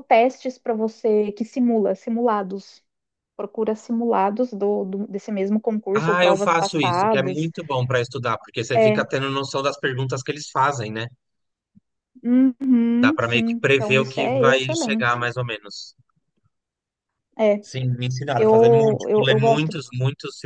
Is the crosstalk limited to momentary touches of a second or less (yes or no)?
no